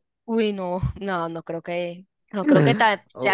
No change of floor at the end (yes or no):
no